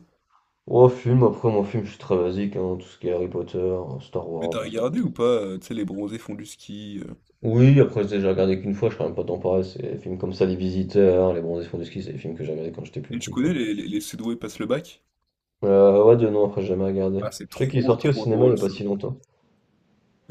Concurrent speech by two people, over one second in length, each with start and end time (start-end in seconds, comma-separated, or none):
17.2-18.6